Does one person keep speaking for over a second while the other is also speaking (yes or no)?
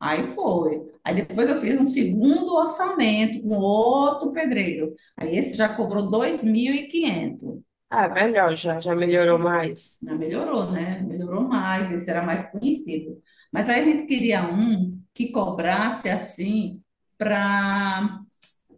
no